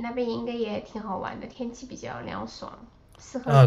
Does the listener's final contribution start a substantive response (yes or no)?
yes